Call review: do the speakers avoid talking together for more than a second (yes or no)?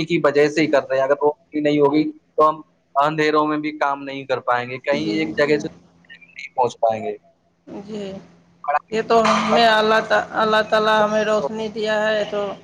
yes